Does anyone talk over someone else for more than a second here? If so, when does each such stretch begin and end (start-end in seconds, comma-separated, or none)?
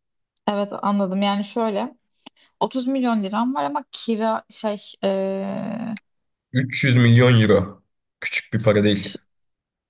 none